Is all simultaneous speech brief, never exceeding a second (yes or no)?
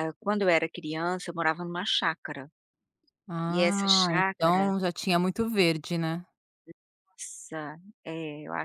no